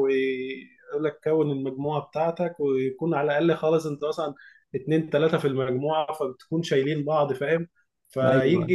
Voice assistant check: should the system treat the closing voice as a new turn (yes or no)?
no